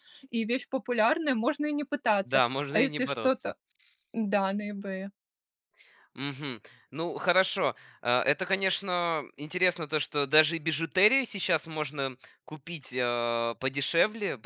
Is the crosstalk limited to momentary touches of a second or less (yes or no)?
no